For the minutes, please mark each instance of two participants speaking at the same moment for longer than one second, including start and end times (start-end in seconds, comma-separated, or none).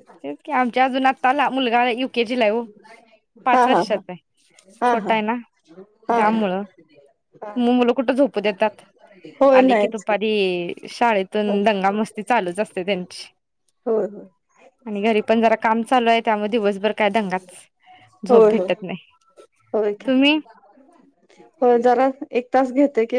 none